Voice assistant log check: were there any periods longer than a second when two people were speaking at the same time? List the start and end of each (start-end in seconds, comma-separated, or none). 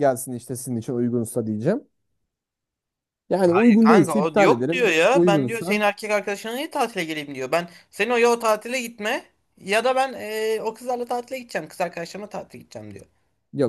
3.8-5.8